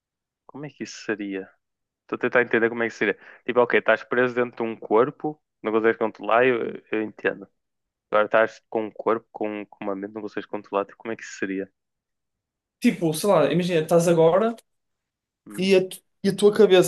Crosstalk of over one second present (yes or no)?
no